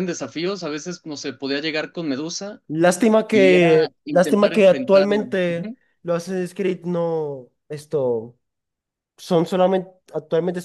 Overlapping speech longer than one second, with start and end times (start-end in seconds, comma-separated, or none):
3.3-5.3